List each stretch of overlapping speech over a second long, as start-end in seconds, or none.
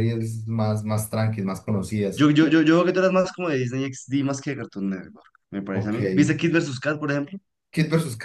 none